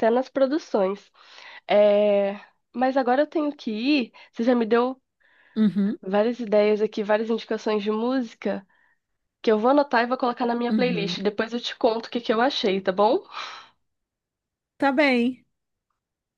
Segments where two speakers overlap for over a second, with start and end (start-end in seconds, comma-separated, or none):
none